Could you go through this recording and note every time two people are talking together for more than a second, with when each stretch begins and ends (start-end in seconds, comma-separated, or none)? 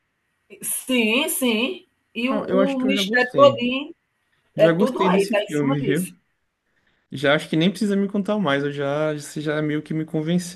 2.3-3.5, 4.5-6.1